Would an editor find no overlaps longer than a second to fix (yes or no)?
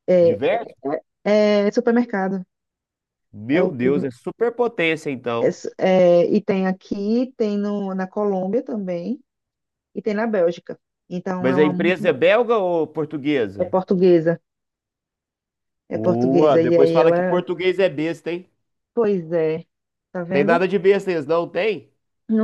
no